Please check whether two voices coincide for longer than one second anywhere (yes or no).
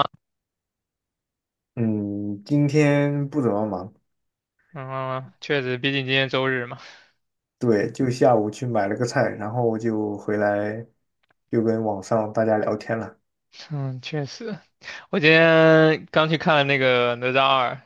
no